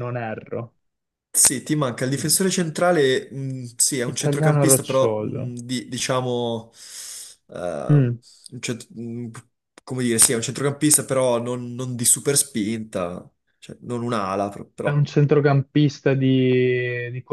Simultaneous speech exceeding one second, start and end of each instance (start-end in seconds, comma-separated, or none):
4.0-5.5